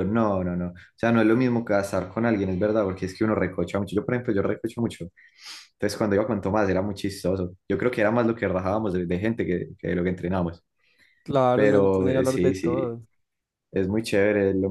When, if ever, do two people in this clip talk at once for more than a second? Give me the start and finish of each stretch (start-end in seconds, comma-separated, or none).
11.5-13.0